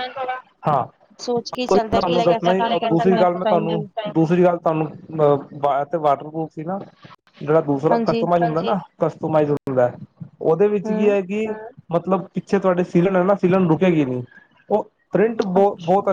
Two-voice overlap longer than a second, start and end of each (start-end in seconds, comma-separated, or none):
1.7-3.8